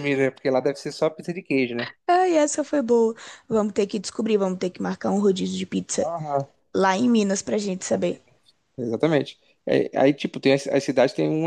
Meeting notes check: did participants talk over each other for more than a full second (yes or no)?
no